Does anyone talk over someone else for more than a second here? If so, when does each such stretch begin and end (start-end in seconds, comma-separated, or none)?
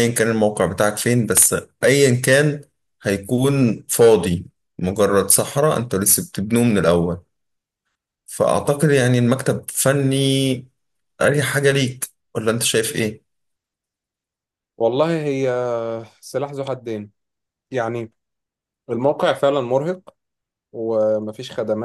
none